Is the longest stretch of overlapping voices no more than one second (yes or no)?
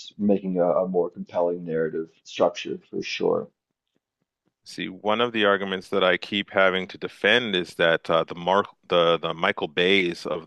yes